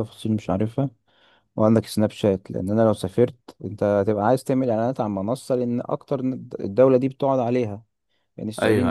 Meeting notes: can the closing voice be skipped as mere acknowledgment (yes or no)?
yes